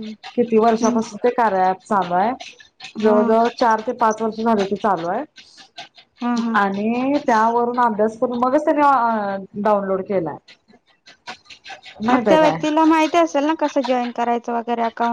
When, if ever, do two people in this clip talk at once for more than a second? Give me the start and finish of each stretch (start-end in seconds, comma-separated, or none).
none